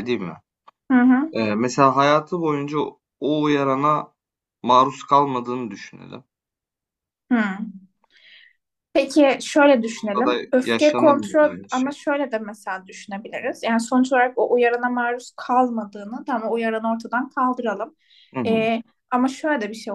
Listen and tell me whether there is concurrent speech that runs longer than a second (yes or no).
yes